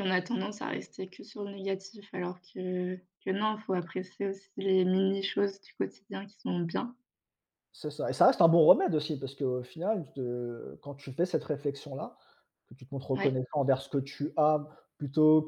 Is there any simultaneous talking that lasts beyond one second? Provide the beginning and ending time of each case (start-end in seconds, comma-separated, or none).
none